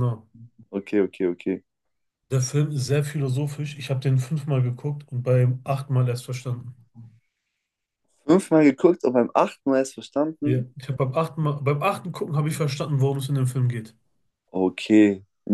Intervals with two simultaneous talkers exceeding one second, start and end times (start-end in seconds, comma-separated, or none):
none